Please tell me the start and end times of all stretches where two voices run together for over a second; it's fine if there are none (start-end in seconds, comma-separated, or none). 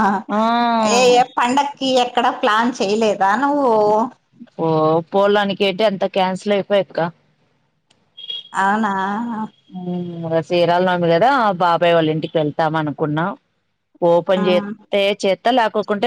none